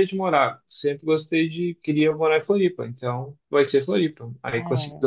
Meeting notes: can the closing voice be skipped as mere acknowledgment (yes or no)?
yes